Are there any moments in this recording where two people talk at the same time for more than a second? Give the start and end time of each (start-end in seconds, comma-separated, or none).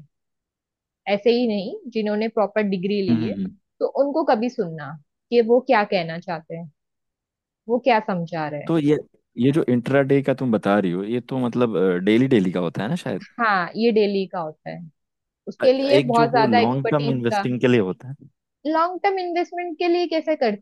15.6-17.5